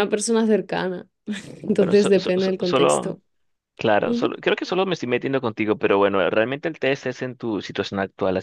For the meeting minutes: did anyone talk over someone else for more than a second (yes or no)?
yes